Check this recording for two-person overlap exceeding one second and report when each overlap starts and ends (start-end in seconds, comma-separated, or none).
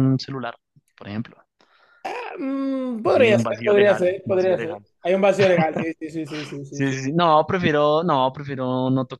3.1-4.8